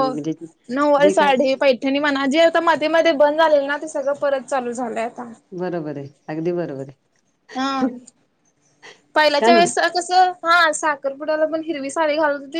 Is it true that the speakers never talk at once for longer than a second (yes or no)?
yes